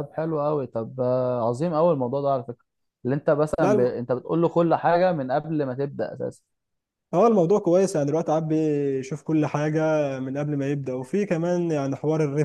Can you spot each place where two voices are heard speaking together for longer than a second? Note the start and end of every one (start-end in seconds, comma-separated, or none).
none